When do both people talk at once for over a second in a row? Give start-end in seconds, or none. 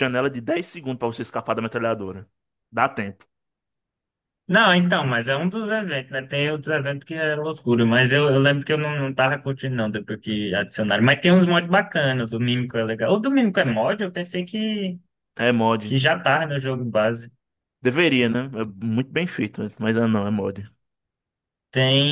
none